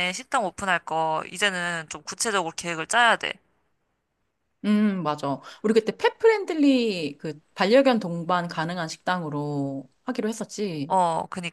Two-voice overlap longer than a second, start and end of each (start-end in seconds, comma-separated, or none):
none